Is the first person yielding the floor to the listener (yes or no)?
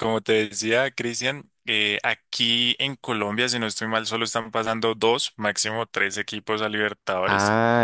yes